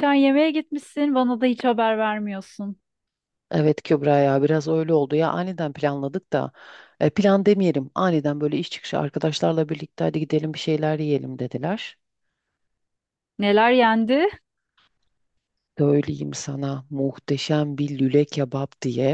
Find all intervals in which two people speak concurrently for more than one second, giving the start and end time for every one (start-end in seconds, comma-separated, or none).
none